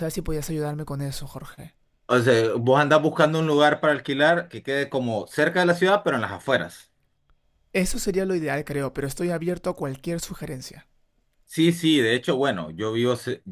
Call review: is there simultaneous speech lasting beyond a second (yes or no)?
no